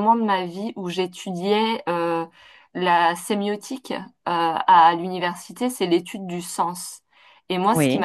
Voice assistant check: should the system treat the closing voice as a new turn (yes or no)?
no